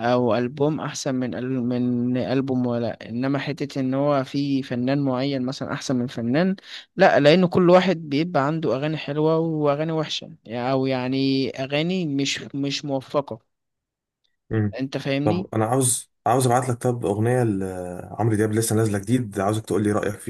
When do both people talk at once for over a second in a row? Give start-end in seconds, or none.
none